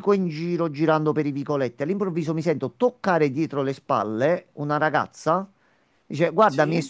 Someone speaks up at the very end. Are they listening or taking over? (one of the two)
listening